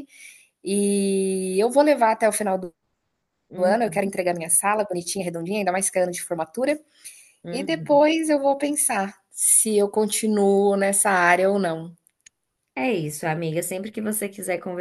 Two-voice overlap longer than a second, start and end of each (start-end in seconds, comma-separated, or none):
none